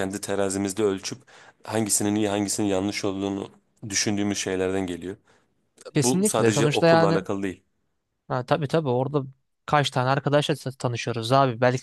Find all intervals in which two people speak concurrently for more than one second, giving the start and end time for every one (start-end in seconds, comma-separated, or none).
5.9-7.2